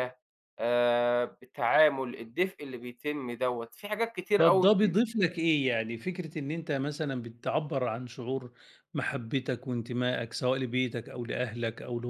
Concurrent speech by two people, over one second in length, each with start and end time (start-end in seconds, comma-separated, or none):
none